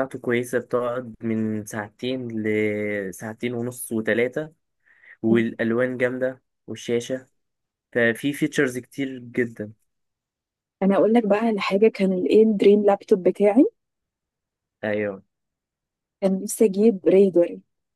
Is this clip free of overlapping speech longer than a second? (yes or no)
yes